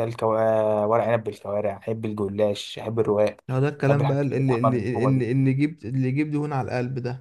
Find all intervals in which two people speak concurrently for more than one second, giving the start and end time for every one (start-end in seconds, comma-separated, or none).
3.9-5.2